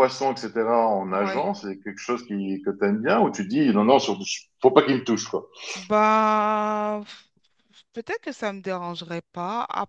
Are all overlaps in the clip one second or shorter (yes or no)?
yes